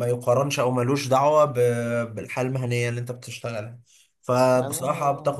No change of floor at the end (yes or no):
yes